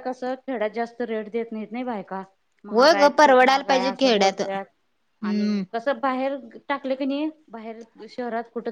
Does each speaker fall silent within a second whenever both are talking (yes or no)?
no